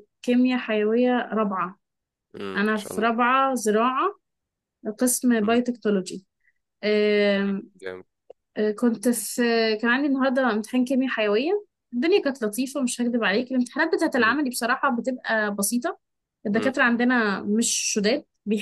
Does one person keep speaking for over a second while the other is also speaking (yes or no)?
no